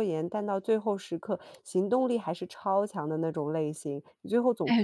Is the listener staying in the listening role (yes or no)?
no